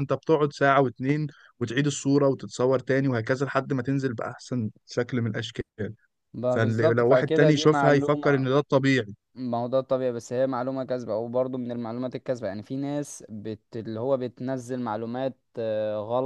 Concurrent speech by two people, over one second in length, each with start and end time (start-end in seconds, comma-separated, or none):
6.5-8.5